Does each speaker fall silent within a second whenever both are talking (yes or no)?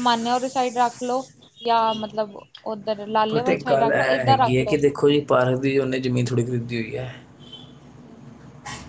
no